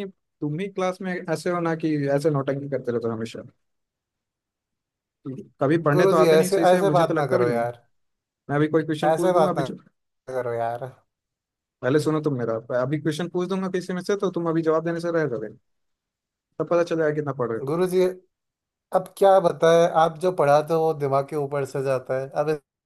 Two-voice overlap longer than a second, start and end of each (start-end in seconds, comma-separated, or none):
6.0-7.6